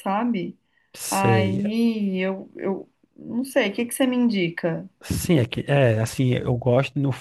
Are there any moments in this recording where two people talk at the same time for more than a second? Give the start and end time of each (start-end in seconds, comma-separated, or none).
none